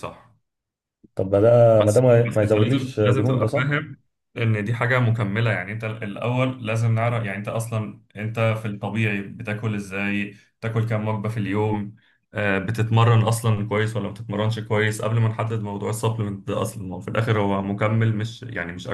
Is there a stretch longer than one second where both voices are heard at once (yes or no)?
yes